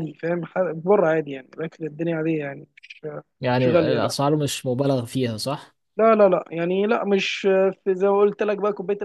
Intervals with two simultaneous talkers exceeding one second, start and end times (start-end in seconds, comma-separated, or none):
none